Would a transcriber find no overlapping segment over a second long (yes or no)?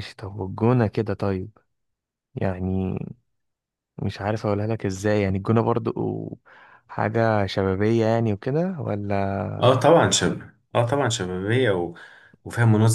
yes